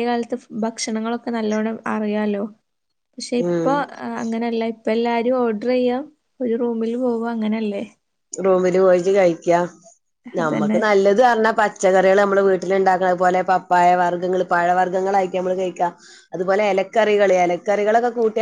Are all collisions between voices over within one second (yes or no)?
yes